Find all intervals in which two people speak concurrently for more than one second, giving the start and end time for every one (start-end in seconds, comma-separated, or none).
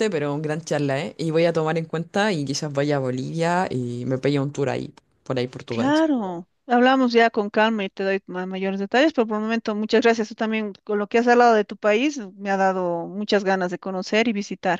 none